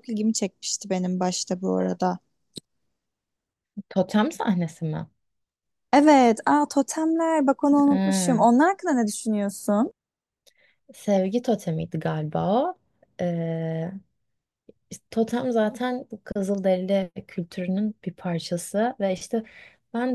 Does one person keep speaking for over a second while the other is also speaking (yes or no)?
no